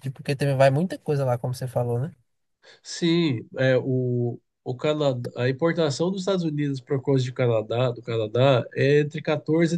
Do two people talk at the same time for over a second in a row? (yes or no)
no